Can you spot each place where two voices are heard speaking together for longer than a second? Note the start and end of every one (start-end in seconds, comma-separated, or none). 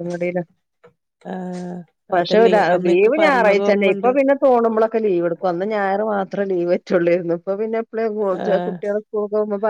2.2-4.1